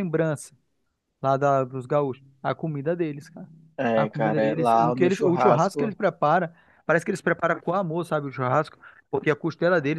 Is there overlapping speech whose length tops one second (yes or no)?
yes